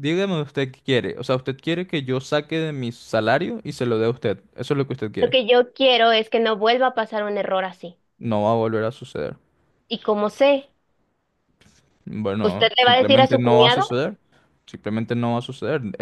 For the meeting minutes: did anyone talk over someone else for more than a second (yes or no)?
yes